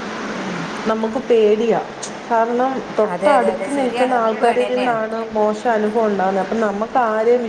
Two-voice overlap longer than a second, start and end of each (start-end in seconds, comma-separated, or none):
3.1-5.0